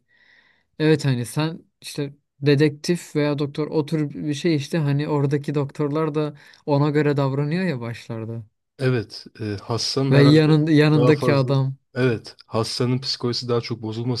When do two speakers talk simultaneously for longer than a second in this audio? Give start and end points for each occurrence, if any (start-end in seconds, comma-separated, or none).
10.1-11.5